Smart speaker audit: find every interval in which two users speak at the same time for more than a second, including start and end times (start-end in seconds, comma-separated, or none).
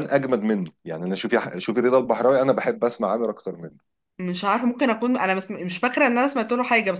none